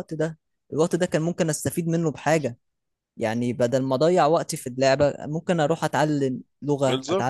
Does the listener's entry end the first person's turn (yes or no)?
yes